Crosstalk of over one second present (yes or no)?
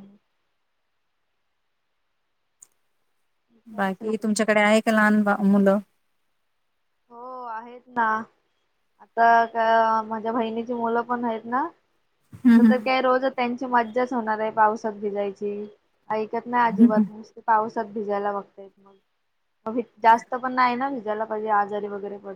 no